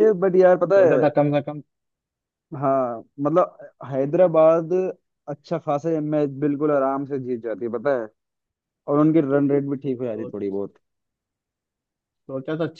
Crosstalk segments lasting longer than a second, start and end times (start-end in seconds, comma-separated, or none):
none